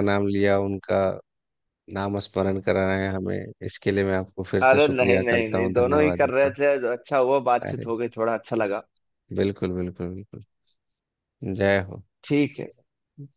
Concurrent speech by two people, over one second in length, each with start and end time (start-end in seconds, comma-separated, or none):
4.6-6.6